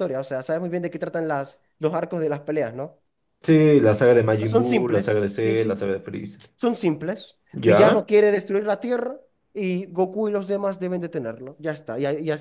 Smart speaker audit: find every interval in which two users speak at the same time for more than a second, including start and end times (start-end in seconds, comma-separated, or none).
4.4-5.8